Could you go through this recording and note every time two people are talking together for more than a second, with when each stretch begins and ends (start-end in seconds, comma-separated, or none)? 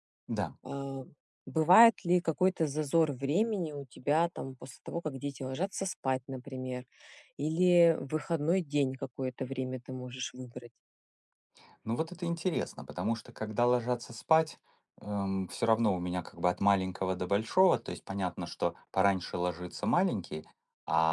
none